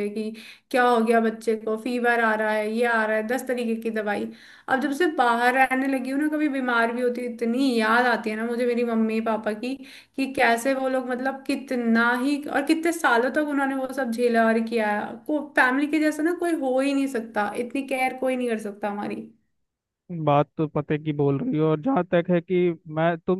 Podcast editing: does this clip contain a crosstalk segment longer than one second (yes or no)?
no